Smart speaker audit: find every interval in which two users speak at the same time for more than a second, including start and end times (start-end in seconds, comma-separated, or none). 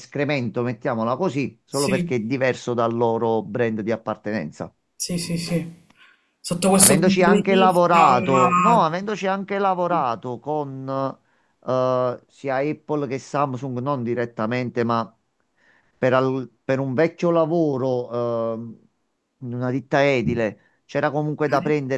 6.7-8.8